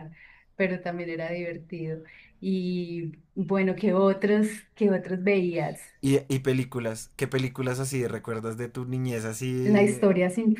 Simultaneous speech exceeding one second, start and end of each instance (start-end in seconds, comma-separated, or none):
none